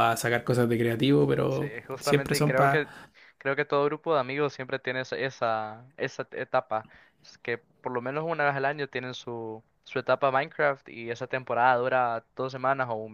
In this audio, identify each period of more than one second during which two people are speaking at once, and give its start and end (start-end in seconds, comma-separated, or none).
1.5-2.9